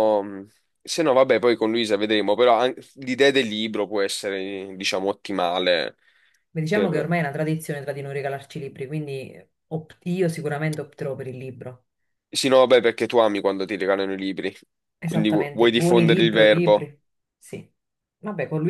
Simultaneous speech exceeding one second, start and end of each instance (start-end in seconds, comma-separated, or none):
15.0-16.9